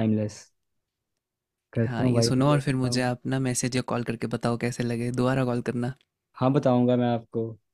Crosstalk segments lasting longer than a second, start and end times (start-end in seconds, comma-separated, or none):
1.9-3.1